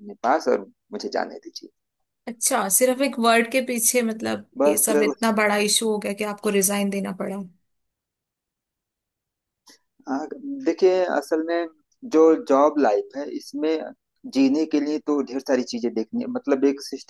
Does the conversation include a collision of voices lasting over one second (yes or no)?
no